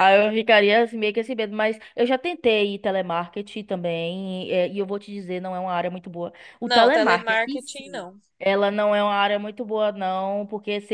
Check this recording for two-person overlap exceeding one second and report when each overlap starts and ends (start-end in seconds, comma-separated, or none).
6.6-8.2